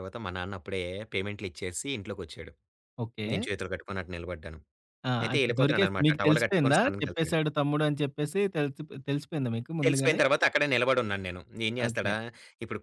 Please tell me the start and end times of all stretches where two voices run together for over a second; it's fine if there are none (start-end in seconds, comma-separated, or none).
5.2-7.4